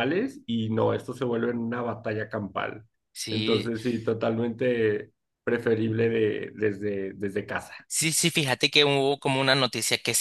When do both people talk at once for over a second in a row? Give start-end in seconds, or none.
none